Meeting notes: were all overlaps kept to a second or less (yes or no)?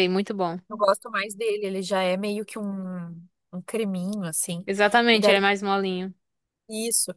yes